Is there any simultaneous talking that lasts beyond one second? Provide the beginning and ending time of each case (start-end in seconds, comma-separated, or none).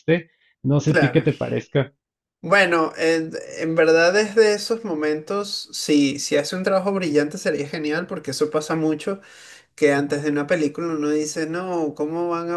none